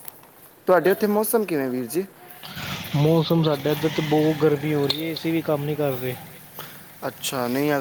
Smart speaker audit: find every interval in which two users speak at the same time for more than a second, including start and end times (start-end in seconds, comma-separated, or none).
none